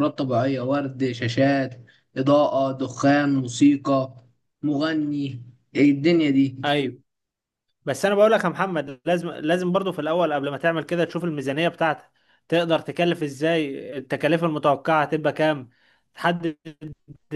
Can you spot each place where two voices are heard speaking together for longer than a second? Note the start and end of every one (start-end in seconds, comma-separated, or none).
none